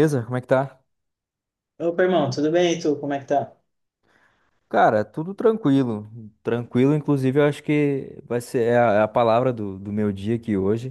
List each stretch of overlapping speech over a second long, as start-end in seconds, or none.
none